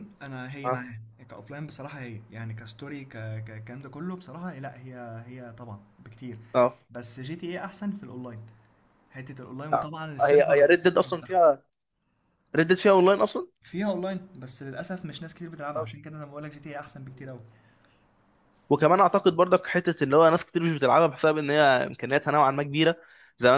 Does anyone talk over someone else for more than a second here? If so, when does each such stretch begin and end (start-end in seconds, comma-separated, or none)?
9.7-11.4